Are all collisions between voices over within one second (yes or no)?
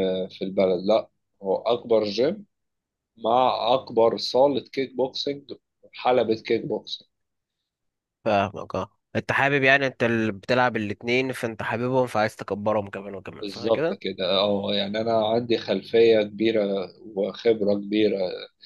yes